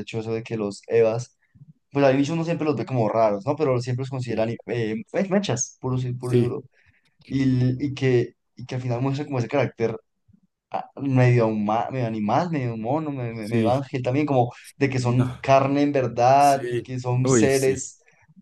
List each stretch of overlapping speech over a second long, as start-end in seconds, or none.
16.4-17.9